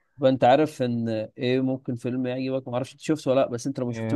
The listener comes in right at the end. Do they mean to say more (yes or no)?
no